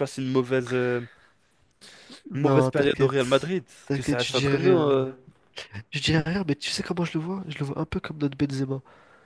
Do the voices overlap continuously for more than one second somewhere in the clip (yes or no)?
yes